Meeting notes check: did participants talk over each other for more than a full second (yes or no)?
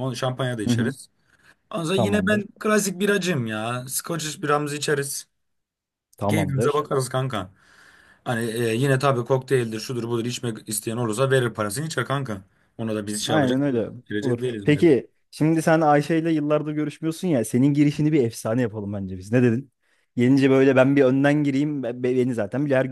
yes